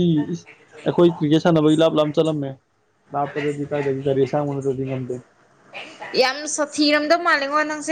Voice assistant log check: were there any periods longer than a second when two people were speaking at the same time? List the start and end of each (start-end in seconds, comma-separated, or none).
none